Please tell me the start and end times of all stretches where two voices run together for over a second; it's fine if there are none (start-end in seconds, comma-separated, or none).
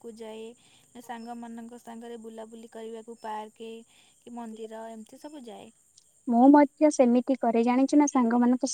none